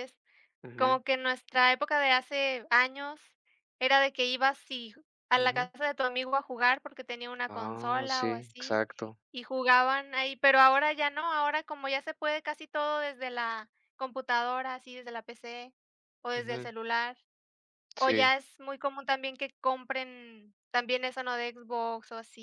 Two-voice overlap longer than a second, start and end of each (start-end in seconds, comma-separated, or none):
7.5-8.8